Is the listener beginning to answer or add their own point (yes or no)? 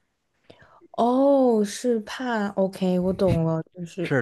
yes